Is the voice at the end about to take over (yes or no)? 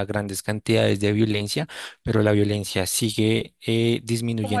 yes